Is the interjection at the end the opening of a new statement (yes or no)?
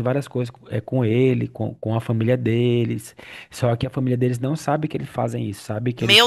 yes